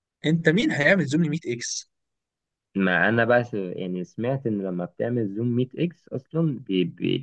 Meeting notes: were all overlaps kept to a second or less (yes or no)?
yes